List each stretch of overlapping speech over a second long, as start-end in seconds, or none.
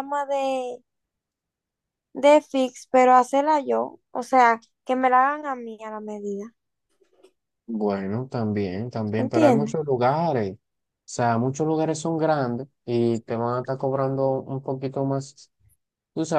none